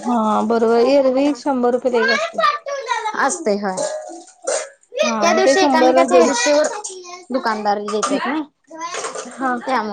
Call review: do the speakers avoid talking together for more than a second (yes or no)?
no